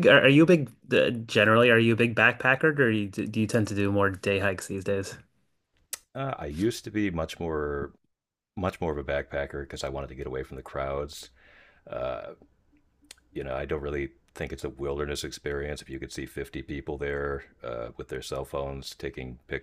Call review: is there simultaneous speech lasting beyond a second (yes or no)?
no